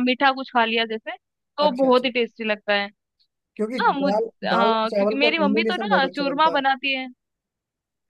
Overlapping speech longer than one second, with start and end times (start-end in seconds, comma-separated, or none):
3.8-6.6